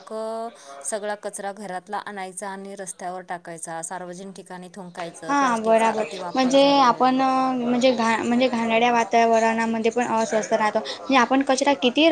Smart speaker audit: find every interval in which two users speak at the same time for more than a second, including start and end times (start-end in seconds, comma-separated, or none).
5.3-7.1